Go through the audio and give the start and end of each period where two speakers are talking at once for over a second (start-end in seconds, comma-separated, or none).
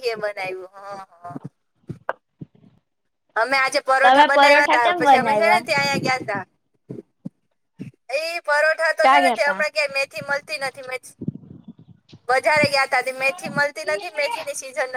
4.0-5.6